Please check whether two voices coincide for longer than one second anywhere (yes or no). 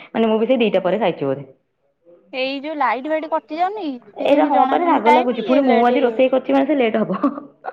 yes